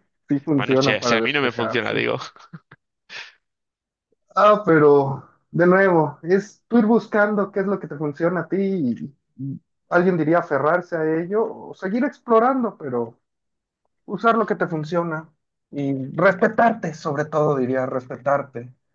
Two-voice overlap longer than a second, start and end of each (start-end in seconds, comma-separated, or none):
0.6-2.0